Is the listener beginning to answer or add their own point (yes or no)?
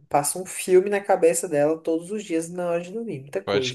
yes